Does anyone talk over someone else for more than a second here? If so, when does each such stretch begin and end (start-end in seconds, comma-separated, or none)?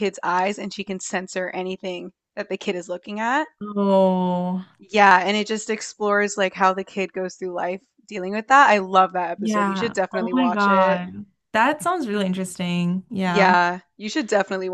9.4-11.0